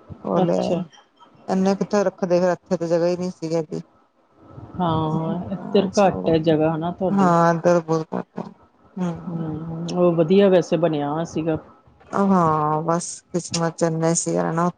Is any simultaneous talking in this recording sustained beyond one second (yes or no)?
no